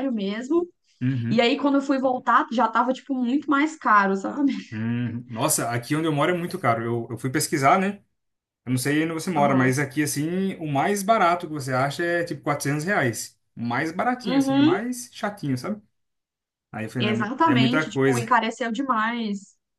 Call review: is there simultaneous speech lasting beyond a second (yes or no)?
yes